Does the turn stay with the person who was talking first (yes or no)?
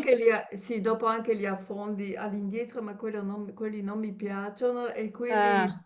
yes